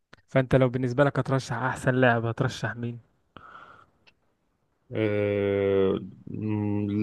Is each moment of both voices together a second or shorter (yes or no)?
yes